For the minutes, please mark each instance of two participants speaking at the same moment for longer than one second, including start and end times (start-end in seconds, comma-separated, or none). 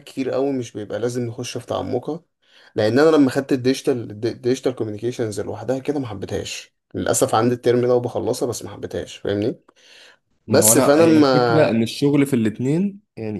10.5-11.8